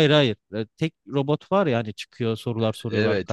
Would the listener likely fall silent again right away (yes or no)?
no